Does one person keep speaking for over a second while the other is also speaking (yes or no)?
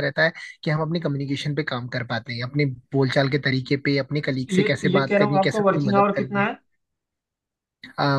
yes